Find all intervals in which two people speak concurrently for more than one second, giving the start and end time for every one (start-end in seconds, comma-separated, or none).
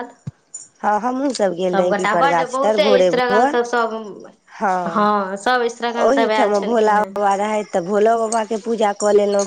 1.7-3.6, 6.1-7.3